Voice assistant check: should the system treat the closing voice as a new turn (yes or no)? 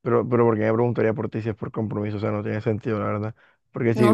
yes